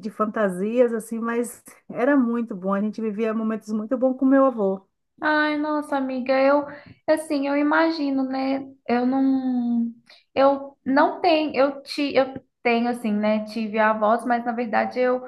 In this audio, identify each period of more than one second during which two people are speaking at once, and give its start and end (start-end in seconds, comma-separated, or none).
none